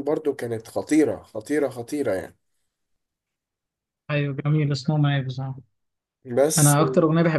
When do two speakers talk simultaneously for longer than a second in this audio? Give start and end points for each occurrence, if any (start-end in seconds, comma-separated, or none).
none